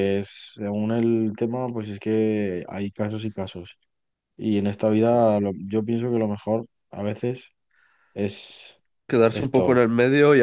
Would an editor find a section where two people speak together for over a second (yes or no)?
no